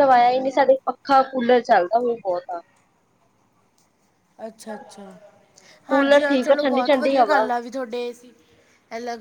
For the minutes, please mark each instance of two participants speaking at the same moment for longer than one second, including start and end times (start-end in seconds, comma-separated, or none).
5.9-7.4